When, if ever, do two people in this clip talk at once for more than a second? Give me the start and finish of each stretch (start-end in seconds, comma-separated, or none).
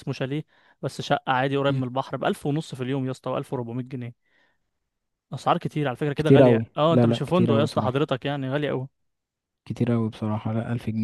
6.2-8.0